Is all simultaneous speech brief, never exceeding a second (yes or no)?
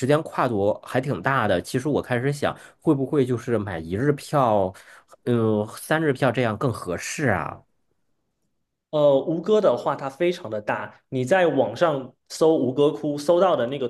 yes